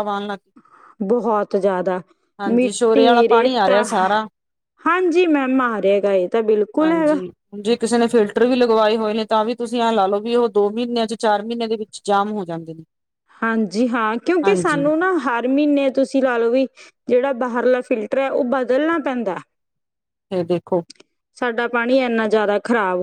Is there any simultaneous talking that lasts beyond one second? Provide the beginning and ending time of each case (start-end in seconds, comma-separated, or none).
2.5-3.8